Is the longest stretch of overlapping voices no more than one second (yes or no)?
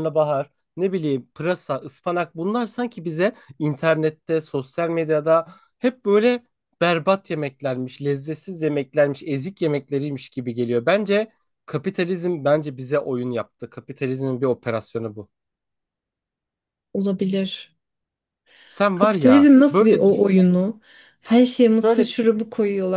no